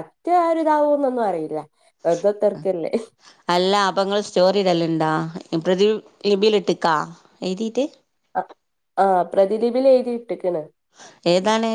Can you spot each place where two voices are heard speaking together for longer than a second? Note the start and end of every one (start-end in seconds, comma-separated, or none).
none